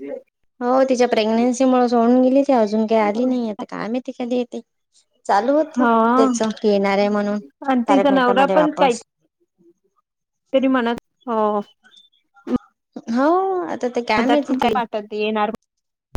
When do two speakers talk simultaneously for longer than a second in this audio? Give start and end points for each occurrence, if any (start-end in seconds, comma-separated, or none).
none